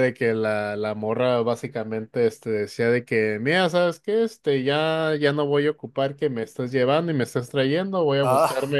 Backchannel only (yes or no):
yes